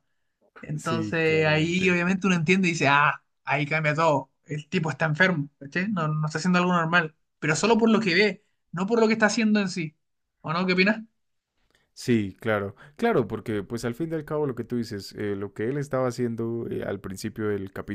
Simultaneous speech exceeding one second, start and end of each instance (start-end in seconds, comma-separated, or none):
0.8-2.0